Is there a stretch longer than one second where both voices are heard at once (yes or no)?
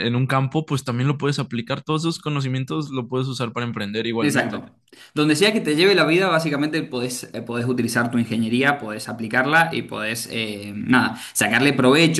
no